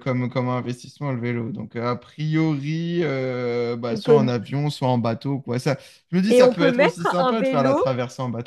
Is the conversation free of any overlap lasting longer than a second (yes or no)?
no